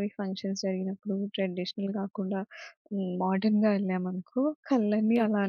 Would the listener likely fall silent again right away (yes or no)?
yes